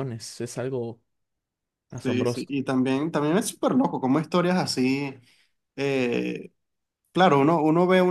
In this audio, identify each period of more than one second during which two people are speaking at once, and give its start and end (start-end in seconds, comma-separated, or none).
none